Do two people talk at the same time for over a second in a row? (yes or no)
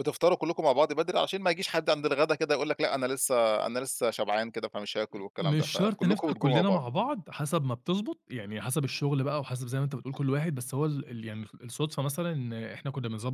yes